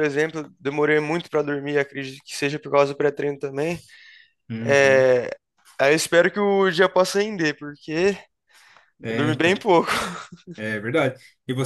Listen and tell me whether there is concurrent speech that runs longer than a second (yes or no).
no